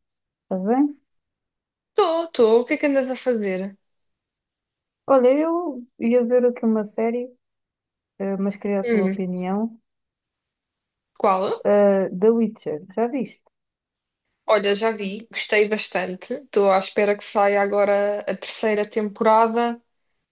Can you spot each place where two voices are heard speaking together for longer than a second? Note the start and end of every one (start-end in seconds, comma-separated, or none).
none